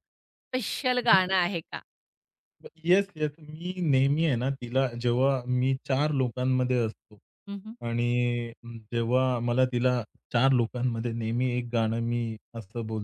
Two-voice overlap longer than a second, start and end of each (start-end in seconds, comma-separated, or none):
none